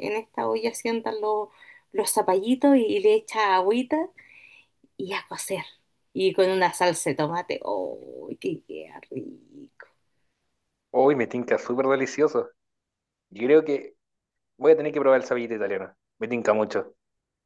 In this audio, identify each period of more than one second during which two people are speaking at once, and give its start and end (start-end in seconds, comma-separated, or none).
none